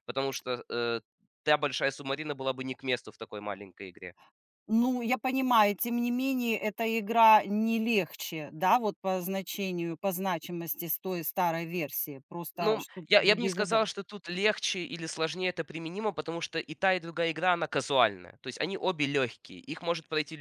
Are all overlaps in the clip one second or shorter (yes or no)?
no